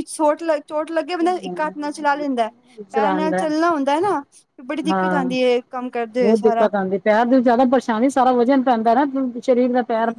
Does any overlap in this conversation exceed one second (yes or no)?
no